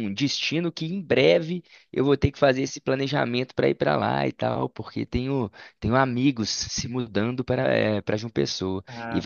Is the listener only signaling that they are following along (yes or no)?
yes